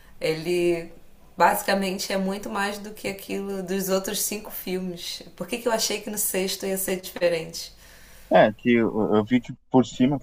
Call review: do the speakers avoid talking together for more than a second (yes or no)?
yes